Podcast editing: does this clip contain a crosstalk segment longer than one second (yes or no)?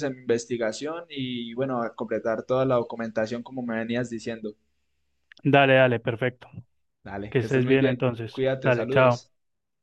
yes